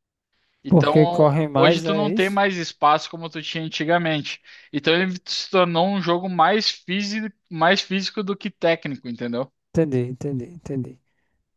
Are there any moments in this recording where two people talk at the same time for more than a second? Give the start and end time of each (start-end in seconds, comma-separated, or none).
0.7-2.4